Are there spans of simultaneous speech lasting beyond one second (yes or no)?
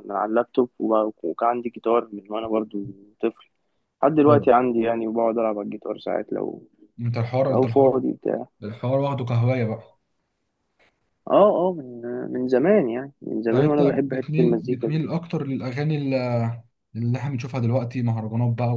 yes